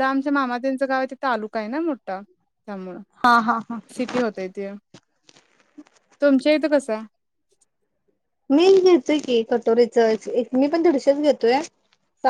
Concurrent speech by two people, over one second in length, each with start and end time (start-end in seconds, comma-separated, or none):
none